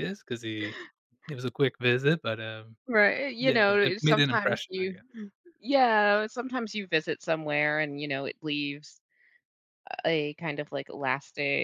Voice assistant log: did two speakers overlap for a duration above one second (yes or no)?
yes